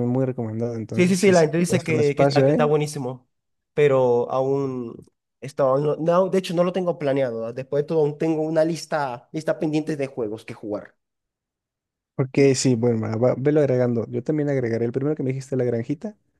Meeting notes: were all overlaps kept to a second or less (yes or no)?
no